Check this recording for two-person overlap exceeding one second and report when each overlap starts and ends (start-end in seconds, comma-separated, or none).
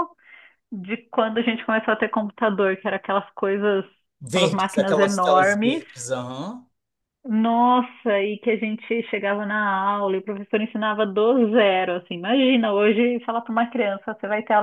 4.3-5.8